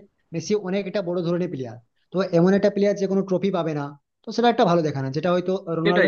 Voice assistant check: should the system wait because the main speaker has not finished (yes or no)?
yes